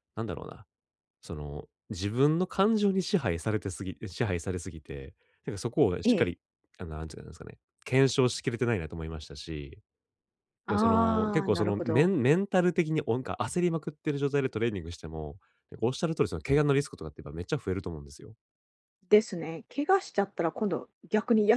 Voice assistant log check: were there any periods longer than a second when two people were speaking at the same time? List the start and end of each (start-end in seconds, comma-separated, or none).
10.7-12.1